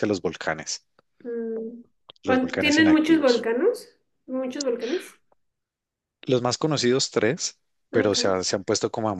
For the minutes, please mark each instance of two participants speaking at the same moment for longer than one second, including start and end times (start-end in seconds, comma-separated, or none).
2.2-3.5